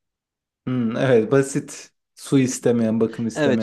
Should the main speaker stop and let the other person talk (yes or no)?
yes